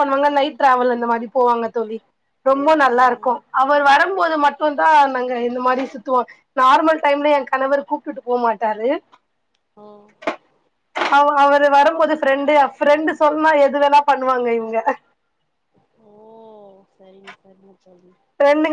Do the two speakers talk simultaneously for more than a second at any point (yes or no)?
no